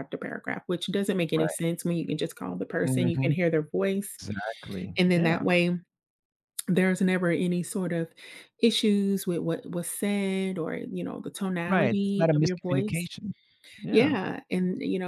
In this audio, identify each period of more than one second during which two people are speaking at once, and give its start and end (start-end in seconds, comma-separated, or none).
11.7-13.1